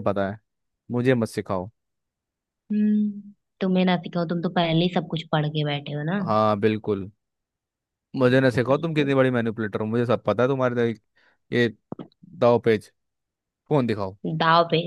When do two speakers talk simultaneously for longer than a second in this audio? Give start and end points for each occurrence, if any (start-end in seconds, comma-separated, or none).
none